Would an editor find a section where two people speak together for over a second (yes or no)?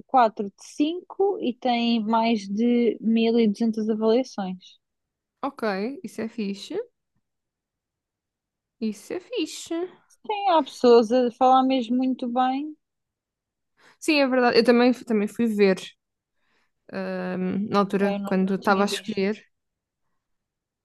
yes